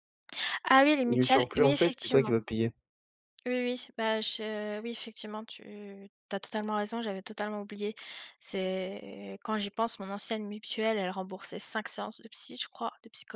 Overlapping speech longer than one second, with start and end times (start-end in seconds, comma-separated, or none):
1.1-2.3